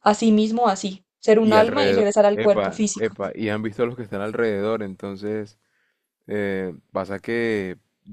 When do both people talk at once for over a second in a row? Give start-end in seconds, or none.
1.4-3.1